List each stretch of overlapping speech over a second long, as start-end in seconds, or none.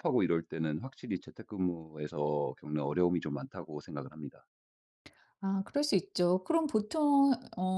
none